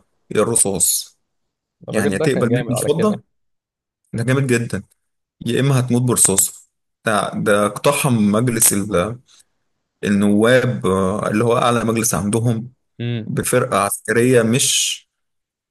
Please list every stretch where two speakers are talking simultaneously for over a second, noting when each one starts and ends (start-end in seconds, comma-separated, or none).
1.9-3.2